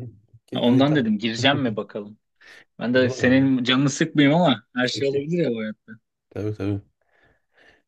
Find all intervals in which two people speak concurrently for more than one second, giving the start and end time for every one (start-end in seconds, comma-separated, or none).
none